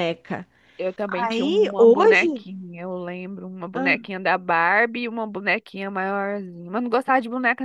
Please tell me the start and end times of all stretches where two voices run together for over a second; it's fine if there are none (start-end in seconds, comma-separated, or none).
1.1-2.5